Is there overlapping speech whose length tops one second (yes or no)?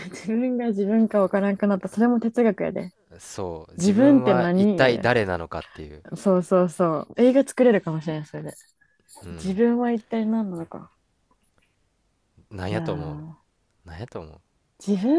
yes